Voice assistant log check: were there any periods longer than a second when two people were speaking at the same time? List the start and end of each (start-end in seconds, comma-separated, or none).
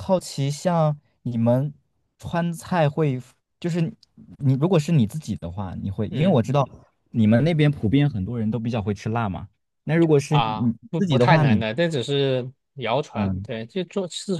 10.3-11.6